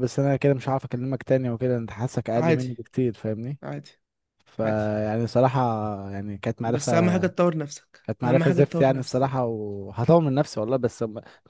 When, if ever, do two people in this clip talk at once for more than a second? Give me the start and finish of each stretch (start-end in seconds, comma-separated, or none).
8.0-9.4